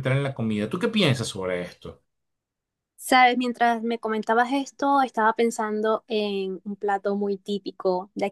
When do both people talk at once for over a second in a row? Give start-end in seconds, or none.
none